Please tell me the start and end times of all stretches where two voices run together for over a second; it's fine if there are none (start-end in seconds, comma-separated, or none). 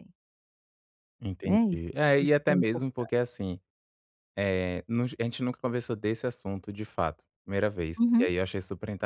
1.4-3.4